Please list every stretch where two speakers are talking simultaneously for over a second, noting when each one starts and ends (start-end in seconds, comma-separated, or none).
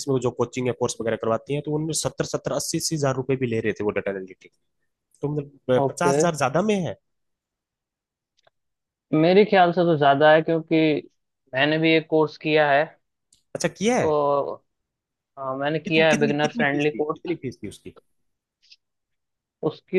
15.9-17.4